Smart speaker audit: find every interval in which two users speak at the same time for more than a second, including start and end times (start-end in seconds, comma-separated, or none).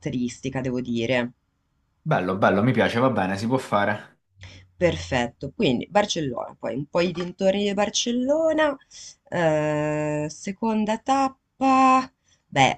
none